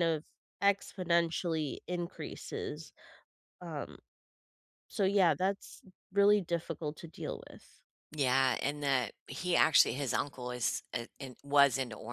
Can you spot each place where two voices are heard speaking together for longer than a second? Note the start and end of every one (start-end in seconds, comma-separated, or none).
none